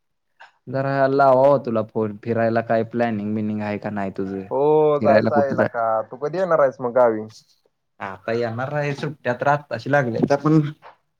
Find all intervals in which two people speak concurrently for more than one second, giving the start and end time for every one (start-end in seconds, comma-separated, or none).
none